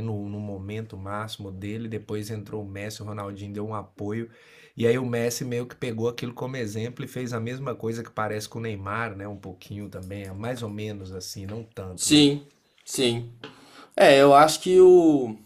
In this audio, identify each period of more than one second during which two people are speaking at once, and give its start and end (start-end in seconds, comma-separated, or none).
none